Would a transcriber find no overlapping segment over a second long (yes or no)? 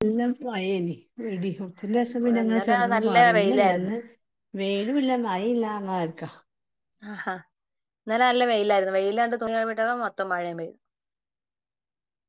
no